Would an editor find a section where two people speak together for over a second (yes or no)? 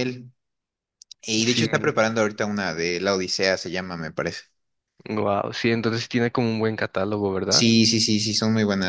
no